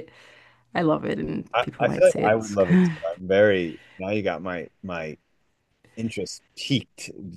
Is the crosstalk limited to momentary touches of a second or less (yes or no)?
no